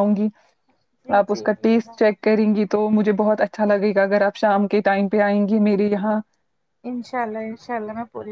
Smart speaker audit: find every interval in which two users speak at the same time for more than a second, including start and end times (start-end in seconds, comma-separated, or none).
none